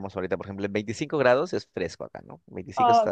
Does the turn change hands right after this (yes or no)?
yes